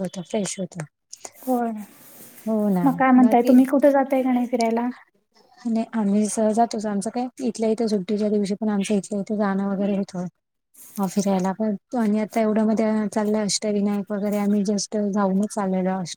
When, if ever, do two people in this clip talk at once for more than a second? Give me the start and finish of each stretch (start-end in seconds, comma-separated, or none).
none